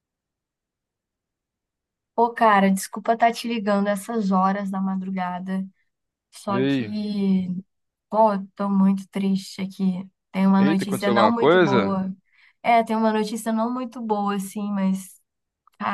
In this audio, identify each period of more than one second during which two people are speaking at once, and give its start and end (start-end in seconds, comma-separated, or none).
10.6-12.0